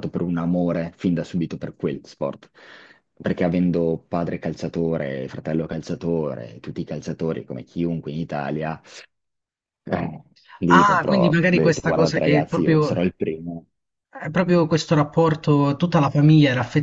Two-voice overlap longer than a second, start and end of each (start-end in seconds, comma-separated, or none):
10.7-13.1